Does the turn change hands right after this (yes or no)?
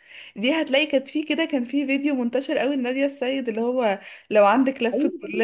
yes